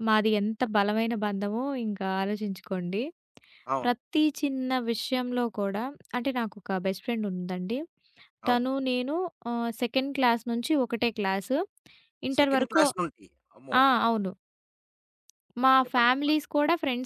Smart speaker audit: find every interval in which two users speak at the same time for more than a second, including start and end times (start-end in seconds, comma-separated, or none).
none